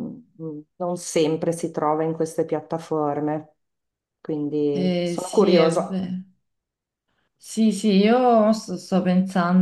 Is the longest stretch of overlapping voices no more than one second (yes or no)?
no